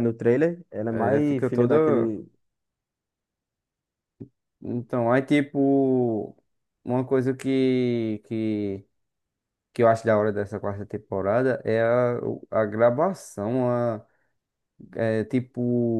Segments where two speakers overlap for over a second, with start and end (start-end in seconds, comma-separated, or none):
0.9-2.1